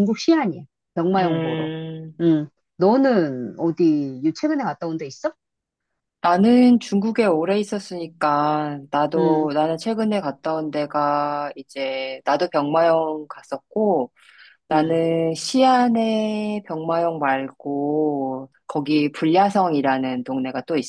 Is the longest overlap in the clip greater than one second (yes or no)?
no